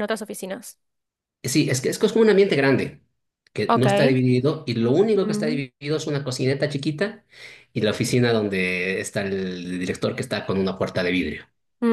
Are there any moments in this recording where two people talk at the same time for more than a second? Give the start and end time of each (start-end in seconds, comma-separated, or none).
none